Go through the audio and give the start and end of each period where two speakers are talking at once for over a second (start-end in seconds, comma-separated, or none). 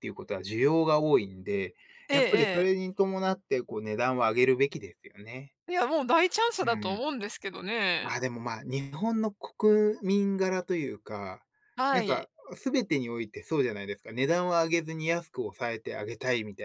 none